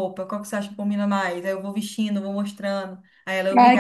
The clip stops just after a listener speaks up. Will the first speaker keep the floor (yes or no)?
no